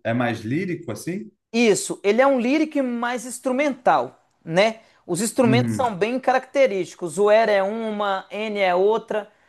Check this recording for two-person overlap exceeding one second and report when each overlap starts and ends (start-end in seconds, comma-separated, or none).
none